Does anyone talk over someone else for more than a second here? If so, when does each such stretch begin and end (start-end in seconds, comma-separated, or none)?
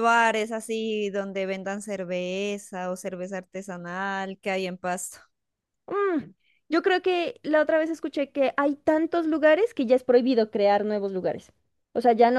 none